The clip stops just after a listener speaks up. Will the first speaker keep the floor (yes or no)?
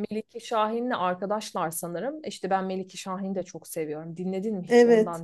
no